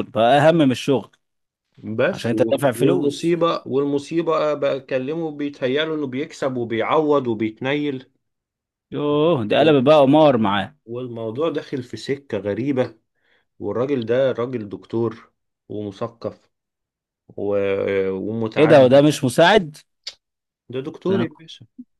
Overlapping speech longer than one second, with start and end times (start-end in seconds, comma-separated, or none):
2.1-3.4